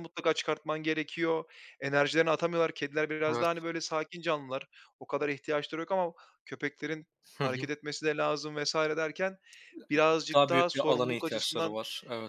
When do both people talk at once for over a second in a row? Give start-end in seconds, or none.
10.3-11.8